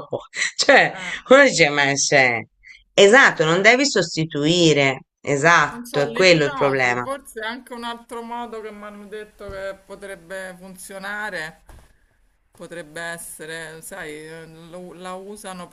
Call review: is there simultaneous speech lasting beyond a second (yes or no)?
yes